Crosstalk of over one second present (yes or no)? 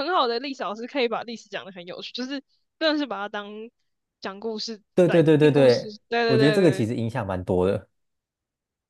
yes